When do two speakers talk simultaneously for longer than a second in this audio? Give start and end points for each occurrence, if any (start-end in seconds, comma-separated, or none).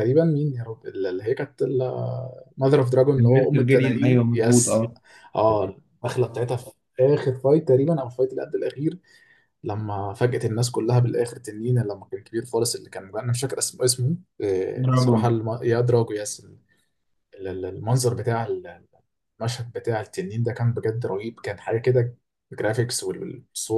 3.2-4.8